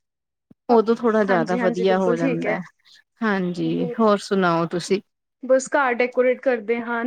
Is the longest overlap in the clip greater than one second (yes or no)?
yes